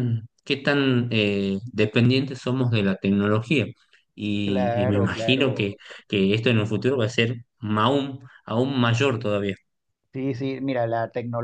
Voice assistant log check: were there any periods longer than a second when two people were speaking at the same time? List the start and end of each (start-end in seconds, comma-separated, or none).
4.4-5.8